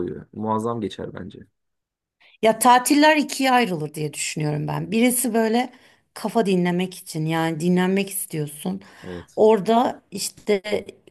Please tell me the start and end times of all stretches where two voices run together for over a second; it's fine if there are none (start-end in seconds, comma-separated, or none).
none